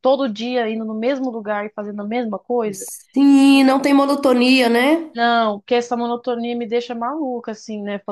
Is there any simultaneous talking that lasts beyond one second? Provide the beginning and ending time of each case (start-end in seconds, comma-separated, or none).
none